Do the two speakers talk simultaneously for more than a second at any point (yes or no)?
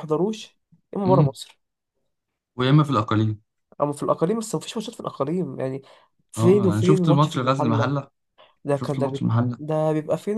yes